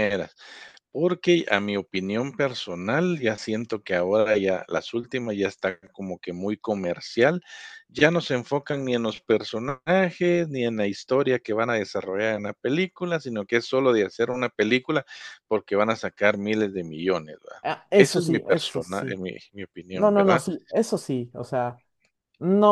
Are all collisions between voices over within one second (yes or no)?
no